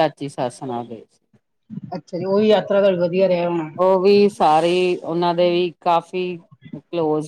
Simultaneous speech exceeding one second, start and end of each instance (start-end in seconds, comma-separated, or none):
none